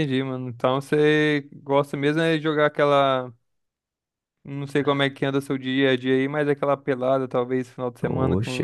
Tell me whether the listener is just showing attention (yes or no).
no